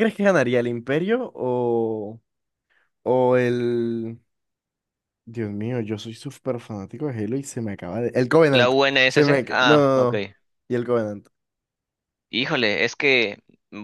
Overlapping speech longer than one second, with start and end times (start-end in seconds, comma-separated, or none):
8.5-10.1